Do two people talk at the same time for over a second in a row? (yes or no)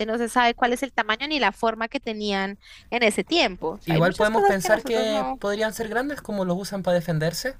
yes